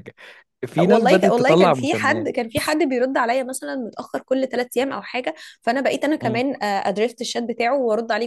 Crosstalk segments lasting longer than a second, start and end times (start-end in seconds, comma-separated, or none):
0.9-2.3